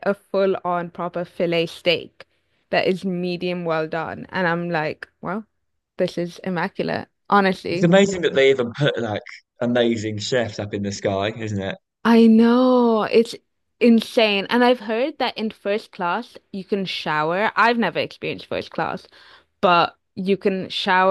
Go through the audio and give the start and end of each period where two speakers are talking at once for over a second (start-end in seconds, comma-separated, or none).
none